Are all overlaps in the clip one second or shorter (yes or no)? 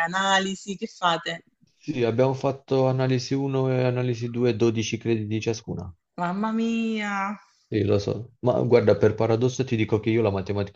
yes